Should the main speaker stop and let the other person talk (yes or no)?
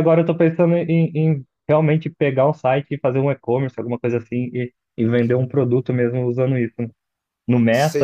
yes